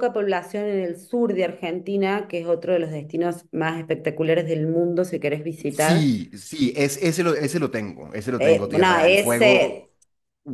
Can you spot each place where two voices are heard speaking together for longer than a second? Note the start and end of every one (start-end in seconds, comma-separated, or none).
8.4-9.9